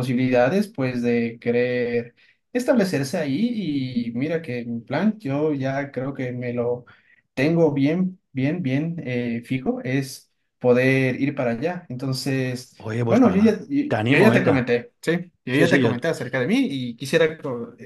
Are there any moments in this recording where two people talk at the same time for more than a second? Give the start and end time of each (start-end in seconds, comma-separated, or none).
12.8-14.7